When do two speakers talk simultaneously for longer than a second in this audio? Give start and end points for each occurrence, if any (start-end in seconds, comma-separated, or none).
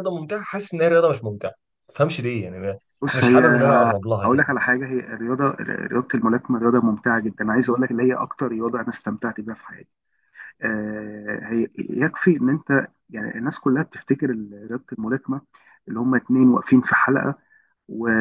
none